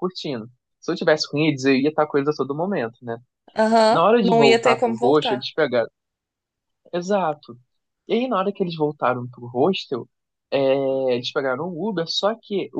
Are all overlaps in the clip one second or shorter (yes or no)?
no